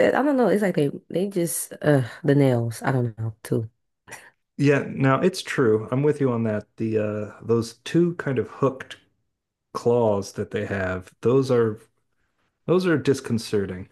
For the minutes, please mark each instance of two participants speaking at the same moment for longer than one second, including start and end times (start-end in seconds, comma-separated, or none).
none